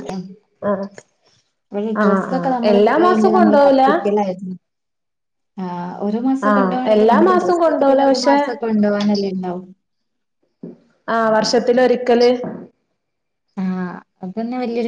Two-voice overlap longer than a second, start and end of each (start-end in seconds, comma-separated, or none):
2.0-3.8, 6.5-8.4